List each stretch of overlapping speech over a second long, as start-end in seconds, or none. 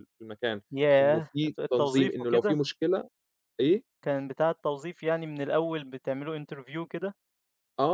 1.0-2.6